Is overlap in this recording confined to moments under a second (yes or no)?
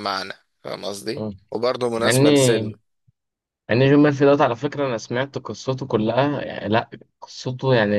yes